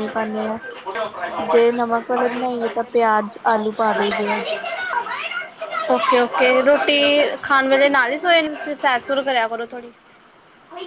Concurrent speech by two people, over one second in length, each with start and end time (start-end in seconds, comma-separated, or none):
none